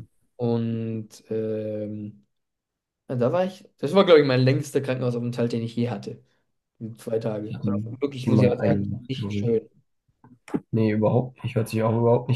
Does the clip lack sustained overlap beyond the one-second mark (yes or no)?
no